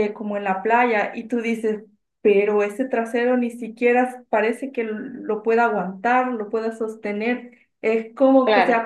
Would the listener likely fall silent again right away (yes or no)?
yes